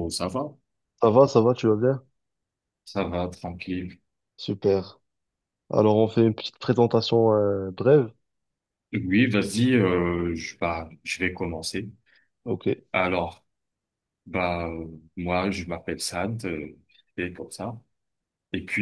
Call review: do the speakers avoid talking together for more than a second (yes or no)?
yes